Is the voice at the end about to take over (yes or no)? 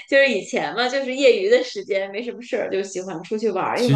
yes